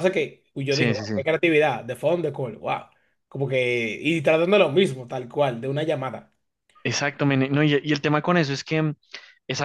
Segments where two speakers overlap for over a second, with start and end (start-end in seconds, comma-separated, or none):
none